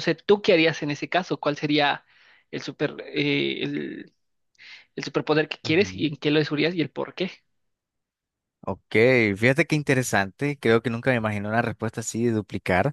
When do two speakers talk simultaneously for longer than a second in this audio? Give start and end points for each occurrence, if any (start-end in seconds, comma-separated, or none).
none